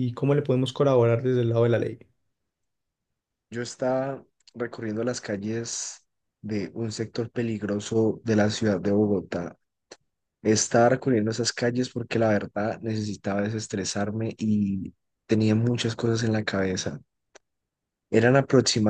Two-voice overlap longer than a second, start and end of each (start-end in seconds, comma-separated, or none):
none